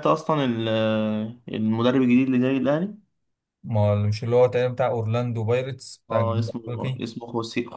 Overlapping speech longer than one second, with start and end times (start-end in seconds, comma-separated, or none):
none